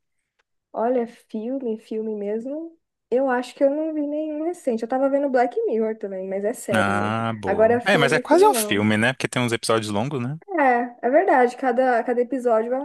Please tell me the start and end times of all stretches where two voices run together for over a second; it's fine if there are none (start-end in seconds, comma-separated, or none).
6.7-8.9